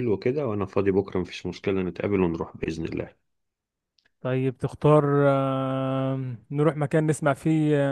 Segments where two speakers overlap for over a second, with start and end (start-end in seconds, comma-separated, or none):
none